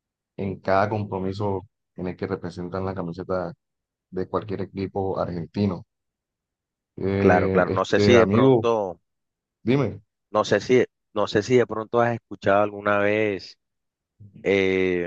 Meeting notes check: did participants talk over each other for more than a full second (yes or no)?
yes